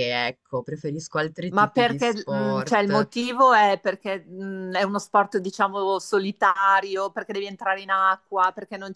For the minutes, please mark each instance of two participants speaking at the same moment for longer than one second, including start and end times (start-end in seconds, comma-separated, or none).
1.5-3.1